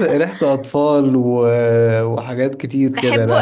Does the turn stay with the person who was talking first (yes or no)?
no